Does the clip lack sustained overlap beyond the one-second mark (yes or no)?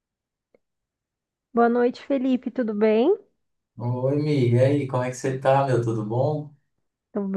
yes